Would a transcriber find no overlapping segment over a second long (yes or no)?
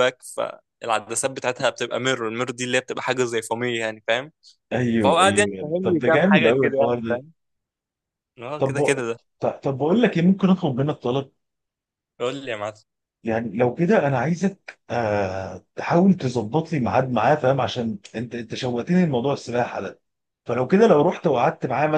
no